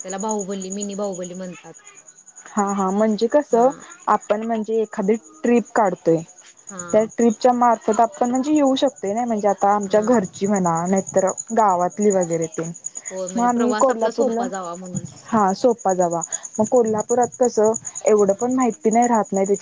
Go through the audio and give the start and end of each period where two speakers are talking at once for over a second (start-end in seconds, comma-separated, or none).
13.1-14.4